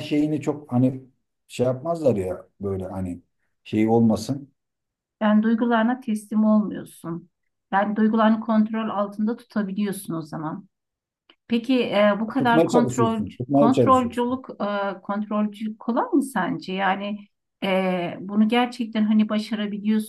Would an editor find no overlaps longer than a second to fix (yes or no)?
no